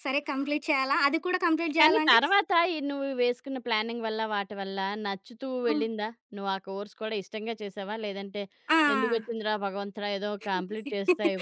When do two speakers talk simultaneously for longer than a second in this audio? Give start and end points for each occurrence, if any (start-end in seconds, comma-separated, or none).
none